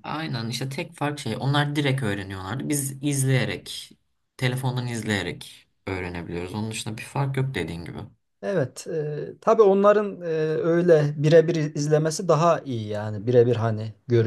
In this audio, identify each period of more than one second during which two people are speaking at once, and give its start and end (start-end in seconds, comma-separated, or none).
none